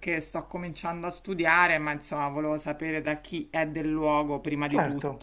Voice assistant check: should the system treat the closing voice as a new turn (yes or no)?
yes